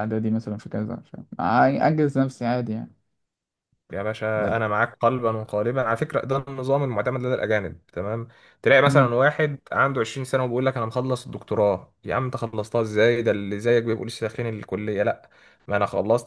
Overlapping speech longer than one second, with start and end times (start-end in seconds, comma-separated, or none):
none